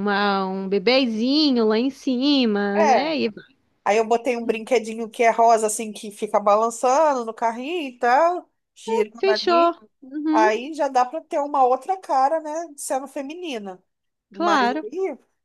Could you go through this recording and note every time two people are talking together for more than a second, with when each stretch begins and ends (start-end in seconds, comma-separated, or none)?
none